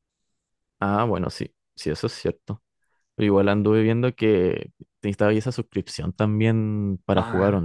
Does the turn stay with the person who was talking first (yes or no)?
no